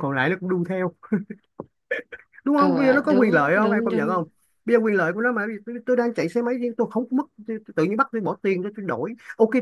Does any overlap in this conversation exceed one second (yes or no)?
yes